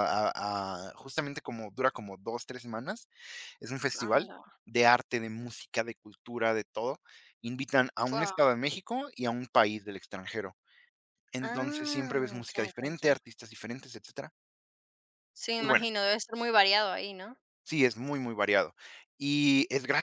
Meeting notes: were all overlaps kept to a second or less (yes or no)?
no